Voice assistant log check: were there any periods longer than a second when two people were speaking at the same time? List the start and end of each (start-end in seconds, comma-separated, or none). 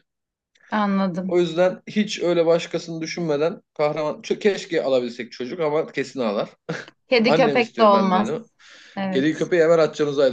7.3-8.5